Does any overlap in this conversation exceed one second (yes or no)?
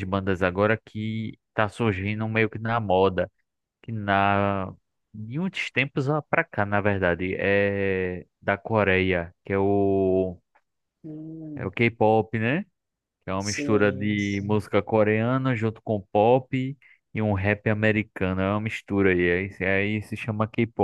yes